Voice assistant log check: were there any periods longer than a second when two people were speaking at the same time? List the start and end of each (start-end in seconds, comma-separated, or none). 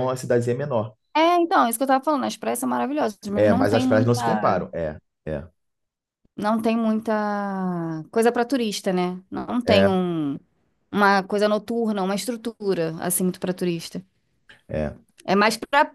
3.4-4.7